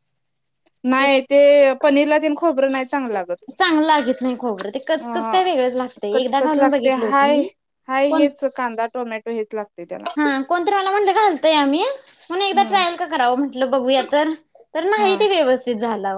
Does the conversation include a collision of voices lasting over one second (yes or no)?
yes